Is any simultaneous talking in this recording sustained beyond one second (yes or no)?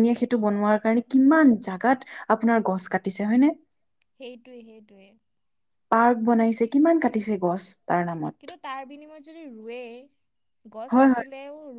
no